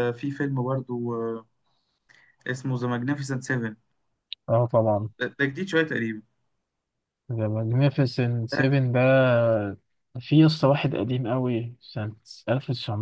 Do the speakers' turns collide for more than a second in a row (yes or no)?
no